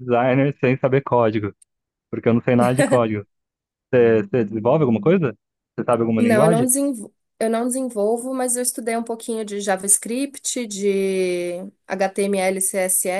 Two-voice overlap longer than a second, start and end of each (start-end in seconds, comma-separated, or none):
none